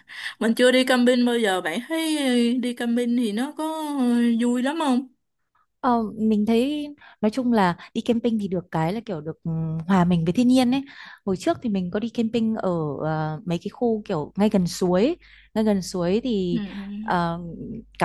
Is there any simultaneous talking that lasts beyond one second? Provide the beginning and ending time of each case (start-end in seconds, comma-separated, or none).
none